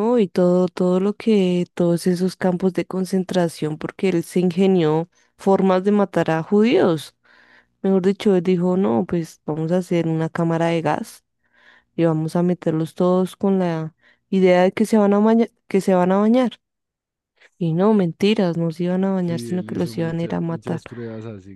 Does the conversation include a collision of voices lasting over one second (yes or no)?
yes